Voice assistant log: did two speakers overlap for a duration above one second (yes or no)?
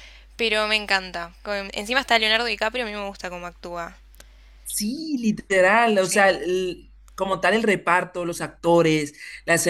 no